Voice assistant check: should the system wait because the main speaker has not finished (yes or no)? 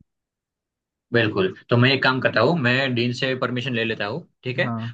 yes